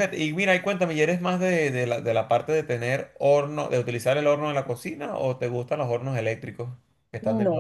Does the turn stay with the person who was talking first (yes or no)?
no